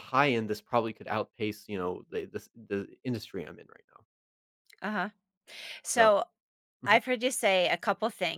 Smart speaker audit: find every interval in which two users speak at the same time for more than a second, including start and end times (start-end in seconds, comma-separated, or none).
none